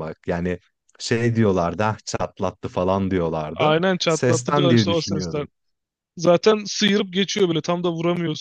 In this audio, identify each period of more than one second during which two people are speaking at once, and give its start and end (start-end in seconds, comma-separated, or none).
3.5-5.5